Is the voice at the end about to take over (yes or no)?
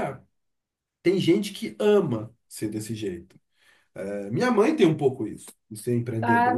yes